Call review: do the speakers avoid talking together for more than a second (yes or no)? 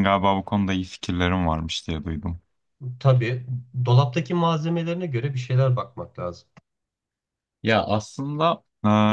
yes